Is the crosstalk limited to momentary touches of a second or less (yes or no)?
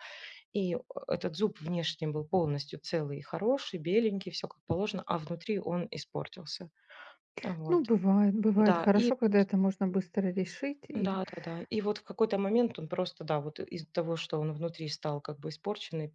yes